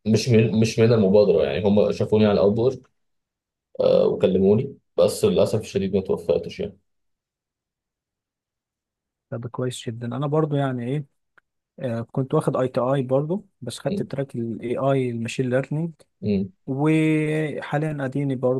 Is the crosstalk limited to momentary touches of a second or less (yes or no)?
yes